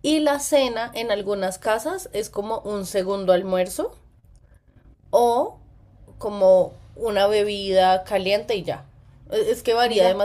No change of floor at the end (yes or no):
yes